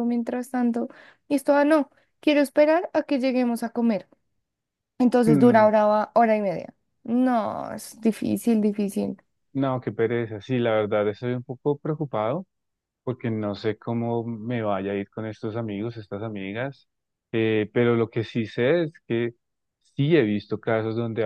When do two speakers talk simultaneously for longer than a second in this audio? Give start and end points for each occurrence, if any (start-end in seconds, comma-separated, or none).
none